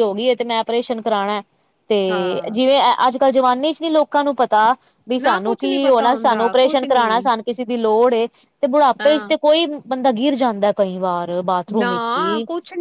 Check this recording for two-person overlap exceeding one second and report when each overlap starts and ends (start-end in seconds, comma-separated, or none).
5.2-7.0